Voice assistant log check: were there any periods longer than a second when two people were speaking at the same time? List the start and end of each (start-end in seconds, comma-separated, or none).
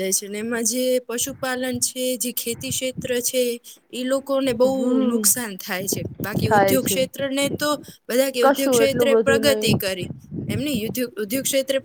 8.4-9.7